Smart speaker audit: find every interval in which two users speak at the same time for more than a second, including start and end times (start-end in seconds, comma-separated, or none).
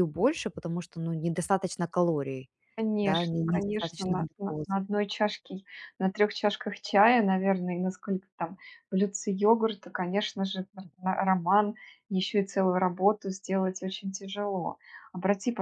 3.0-4.8